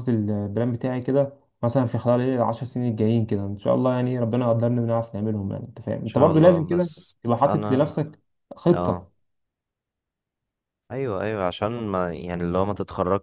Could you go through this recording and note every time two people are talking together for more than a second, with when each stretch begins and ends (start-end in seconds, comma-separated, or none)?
6.0-7.9